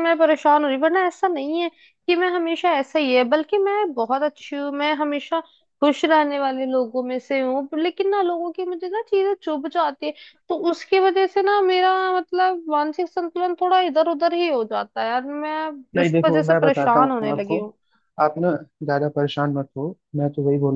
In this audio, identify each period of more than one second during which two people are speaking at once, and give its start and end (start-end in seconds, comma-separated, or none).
16.0-17.6